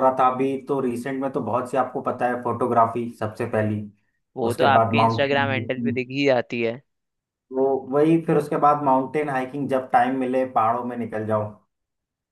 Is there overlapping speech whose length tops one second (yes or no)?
yes